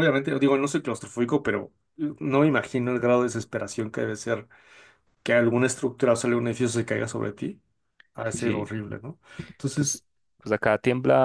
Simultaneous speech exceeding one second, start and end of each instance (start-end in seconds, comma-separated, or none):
none